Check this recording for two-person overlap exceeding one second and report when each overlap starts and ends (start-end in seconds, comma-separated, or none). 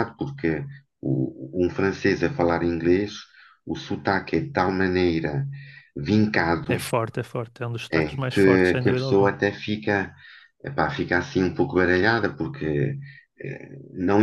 7.9-9.3